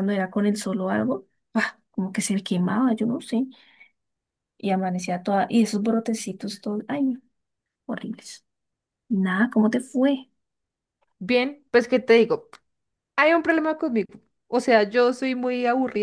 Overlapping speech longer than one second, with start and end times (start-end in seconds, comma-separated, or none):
none